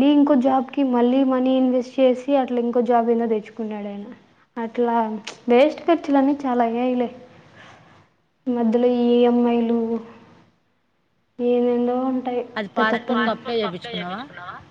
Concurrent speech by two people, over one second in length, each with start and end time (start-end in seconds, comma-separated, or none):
12.8-14.2